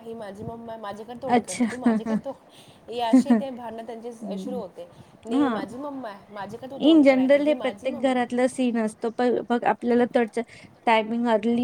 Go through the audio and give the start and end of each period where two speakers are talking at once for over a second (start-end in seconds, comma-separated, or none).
6.9-8.3